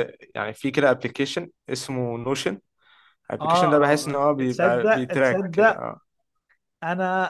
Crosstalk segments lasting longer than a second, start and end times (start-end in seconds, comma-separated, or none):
3.4-5.8